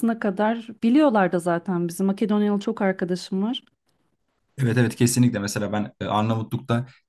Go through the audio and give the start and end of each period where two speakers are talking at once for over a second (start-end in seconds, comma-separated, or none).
none